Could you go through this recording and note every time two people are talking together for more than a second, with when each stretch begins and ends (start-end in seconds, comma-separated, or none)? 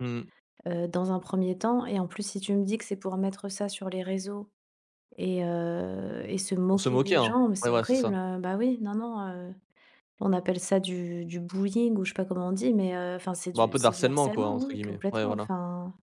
6.7-8.2, 13.5-15.5